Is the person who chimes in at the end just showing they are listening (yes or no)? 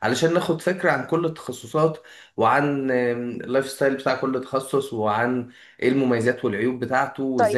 no